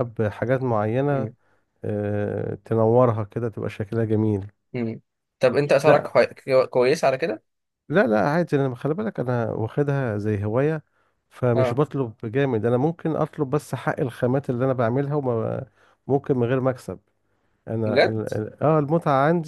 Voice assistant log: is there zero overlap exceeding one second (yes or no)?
yes